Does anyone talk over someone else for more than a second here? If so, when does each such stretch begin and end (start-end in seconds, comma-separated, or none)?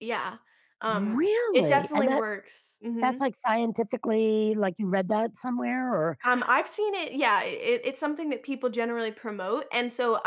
0.9-2.3